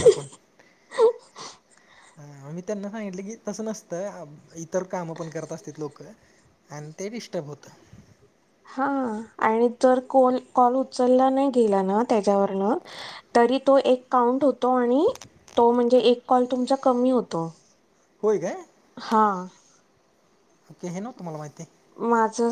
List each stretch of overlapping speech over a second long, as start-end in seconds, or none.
none